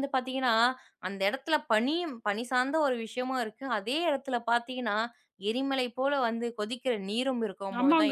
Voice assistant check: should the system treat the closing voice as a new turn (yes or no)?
yes